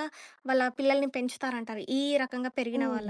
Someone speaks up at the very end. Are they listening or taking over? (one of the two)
taking over